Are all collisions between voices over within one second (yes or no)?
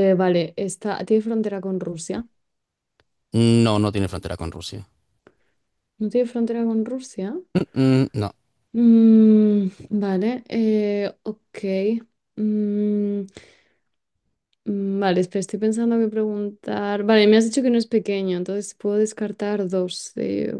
yes